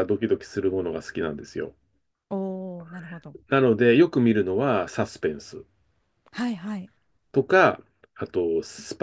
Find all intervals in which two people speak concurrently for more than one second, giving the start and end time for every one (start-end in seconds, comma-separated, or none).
none